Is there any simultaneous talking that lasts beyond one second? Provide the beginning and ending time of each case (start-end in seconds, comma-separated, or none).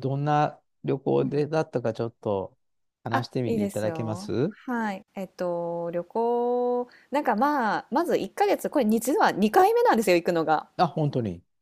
3.1-4.5